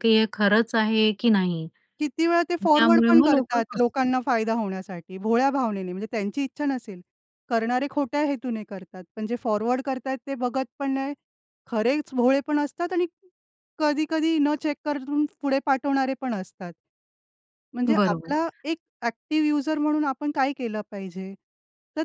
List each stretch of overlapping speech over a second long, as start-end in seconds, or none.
2.6-4.1